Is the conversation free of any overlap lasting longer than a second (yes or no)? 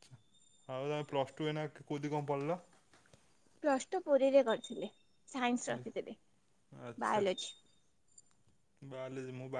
yes